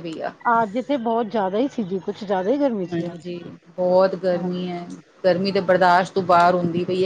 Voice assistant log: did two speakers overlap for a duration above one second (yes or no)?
no